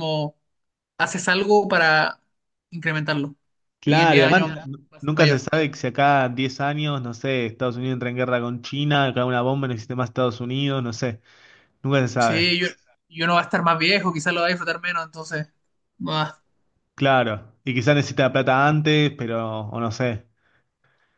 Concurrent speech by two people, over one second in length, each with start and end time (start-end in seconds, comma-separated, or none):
3.9-5.5